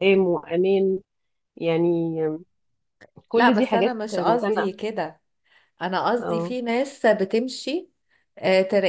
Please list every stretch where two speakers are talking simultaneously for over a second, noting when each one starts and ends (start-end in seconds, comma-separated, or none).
3.3-4.8